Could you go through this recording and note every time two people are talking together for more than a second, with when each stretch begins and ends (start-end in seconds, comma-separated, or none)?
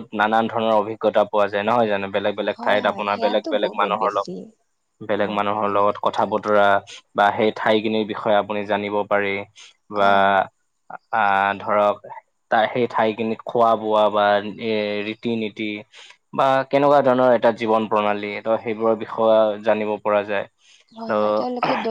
2.6-4.3